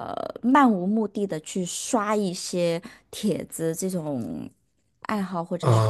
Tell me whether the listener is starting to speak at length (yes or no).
yes